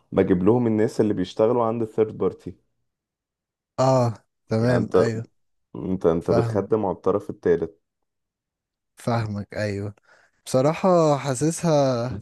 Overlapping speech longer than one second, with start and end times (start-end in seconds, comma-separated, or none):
none